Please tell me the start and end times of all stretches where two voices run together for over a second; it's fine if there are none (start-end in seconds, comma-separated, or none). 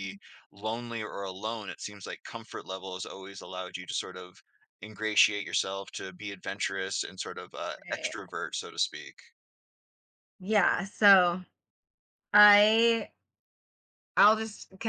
none